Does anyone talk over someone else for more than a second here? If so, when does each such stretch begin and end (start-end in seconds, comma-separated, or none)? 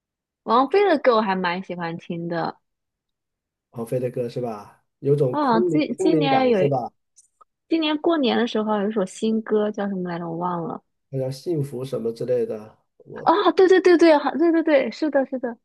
5.3-6.6